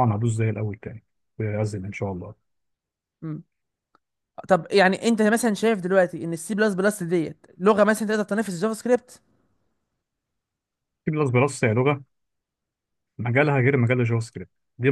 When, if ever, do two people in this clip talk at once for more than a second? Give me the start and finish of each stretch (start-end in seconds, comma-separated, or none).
none